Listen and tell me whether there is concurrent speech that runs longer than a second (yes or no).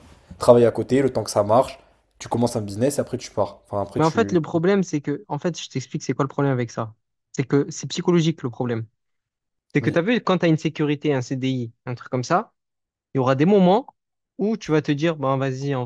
no